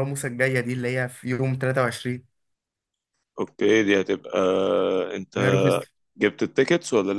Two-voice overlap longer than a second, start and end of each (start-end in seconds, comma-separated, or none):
none